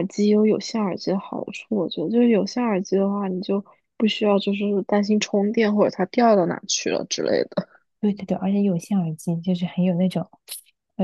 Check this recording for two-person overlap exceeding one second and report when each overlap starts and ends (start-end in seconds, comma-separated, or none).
none